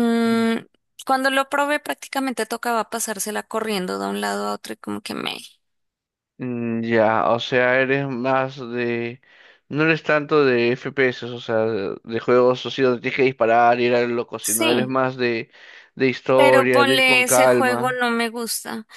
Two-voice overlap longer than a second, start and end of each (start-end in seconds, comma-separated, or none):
16.3-18.0